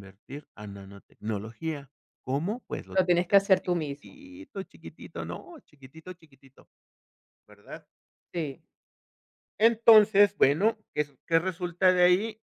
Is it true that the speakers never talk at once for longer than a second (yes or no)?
no